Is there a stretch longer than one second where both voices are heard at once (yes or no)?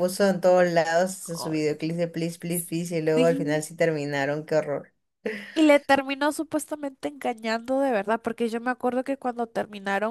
no